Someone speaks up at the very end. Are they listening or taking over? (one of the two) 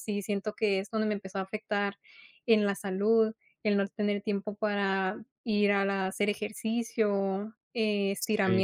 listening